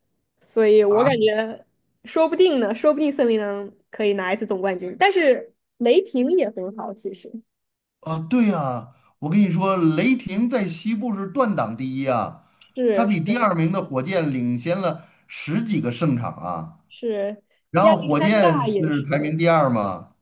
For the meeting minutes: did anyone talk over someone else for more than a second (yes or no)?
yes